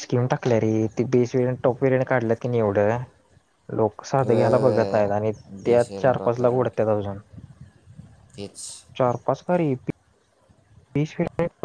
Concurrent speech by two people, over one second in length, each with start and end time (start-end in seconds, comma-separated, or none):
4.3-6.7